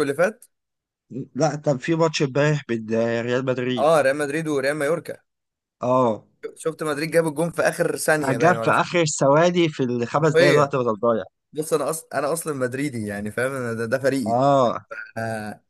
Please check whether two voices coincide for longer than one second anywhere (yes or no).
no